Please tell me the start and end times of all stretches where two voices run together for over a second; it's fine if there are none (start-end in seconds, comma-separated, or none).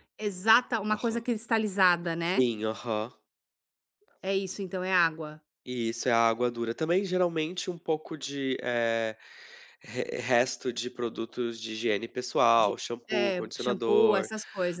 12.6-14.3